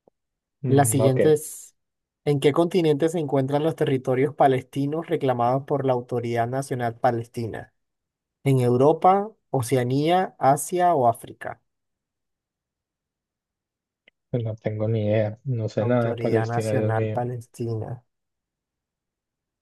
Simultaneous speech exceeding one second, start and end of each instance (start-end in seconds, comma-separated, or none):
15.8-17.2